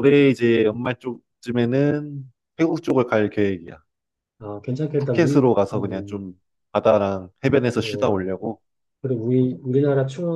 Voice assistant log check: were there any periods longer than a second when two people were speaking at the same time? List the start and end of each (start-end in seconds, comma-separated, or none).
5.0-6.3